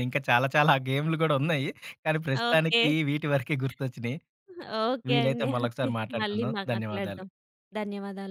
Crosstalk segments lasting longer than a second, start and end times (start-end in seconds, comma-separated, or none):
5.1-7.2